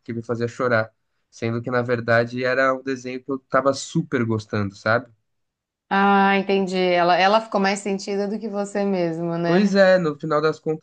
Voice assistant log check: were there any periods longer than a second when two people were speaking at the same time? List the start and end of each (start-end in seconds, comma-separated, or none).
none